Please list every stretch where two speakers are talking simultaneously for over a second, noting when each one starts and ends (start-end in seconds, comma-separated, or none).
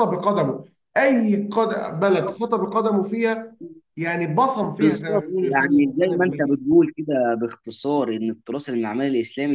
4.8-6.6